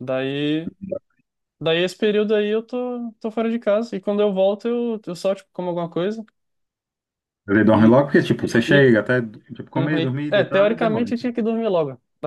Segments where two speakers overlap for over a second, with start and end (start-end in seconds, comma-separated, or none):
9.8-11.1